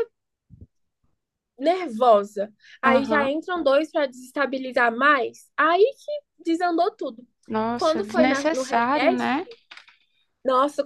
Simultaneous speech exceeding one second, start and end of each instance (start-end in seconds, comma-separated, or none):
7.7-9.4